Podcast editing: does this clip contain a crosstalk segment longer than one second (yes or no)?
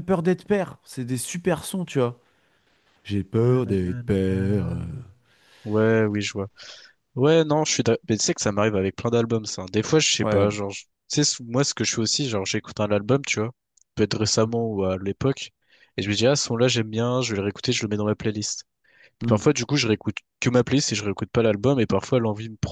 yes